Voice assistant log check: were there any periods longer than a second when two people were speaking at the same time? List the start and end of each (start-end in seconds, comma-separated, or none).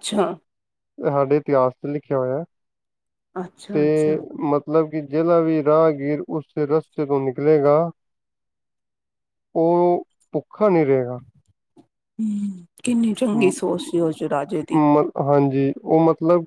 none